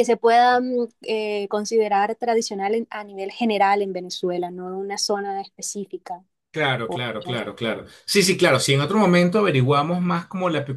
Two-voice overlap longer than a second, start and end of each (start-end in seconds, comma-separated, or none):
none